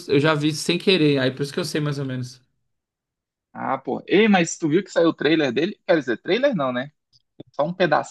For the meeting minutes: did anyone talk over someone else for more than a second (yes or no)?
no